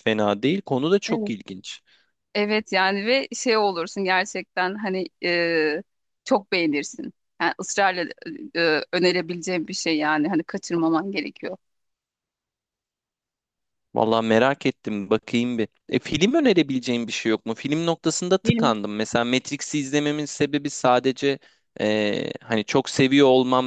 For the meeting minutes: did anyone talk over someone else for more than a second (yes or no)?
no